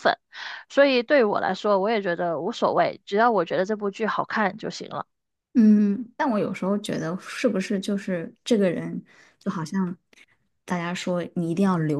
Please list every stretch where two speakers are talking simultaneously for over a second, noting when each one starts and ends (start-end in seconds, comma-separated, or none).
none